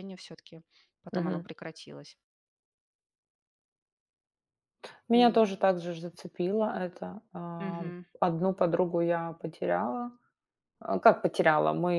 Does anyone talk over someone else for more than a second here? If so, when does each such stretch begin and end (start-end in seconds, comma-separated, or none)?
none